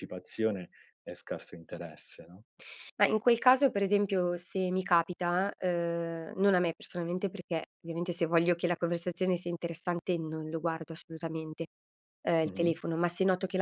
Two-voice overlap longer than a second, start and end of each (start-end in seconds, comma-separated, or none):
none